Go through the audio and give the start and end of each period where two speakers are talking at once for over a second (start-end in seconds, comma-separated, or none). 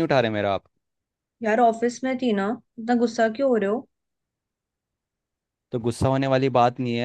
none